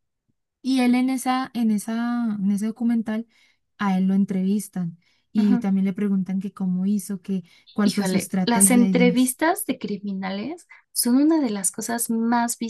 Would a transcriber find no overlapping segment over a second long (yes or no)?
no